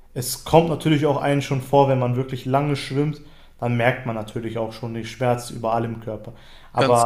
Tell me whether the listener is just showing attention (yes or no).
yes